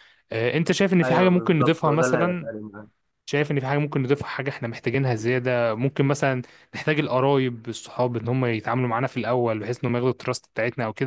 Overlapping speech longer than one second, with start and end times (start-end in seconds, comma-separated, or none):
1.0-2.5